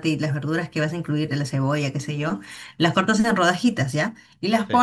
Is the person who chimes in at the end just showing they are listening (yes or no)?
yes